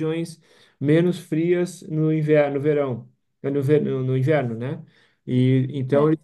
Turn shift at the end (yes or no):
no